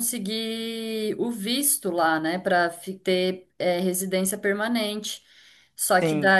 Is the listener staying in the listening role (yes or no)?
yes